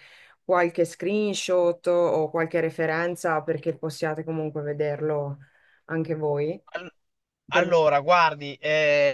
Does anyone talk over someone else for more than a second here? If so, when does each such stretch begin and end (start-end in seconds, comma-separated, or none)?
none